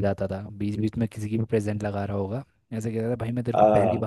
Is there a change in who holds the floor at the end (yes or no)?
no